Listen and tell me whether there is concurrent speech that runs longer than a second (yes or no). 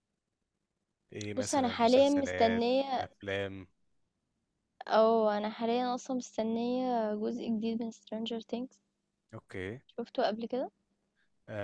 yes